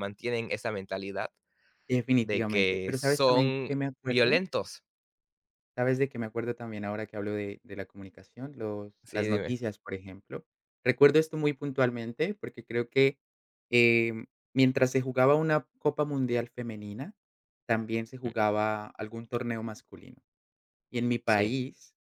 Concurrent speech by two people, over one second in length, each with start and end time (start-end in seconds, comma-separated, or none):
2.2-4.4